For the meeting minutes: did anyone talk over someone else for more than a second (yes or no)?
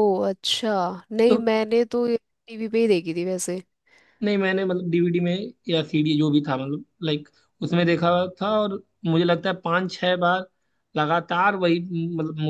no